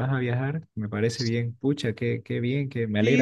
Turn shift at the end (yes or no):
yes